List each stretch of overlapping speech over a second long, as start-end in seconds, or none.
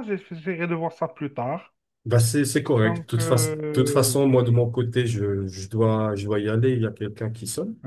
2.8-4.7